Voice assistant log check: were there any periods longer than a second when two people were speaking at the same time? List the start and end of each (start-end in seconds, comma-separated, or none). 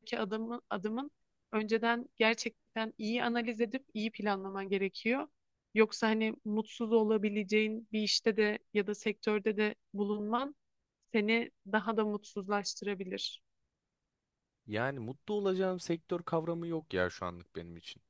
none